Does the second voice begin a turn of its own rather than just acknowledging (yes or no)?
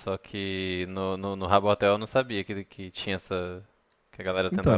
yes